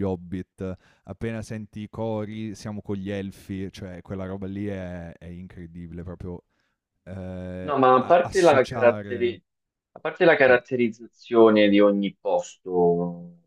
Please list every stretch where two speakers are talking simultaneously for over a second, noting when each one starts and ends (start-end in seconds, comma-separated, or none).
7.6-9.4